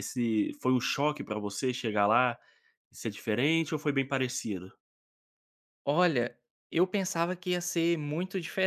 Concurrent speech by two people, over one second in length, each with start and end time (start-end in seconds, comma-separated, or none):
none